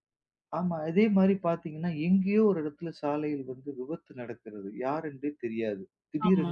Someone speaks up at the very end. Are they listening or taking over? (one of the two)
listening